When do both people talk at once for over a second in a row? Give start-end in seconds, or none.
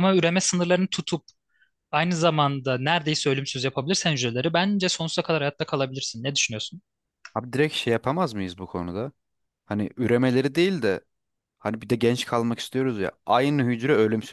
none